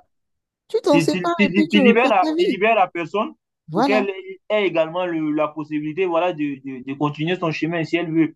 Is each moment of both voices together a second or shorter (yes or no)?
no